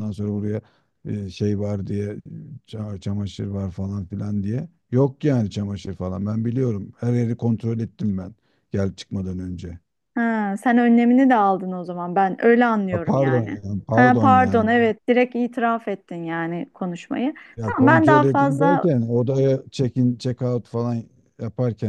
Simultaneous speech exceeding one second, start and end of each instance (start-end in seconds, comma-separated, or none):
12.9-14.7, 17.6-18.9